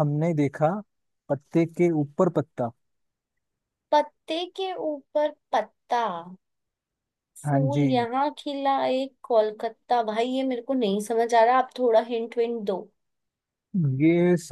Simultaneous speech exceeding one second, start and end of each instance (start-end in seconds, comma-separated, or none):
none